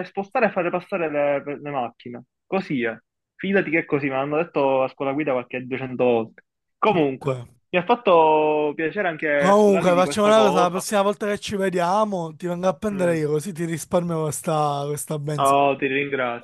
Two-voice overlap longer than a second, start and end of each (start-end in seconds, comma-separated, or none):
9.4-10.8